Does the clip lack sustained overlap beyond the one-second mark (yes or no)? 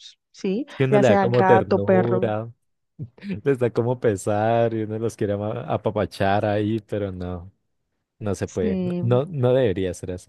no